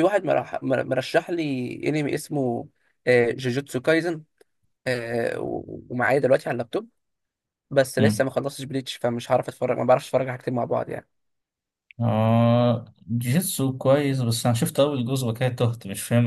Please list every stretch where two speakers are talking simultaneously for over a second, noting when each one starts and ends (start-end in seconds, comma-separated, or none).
none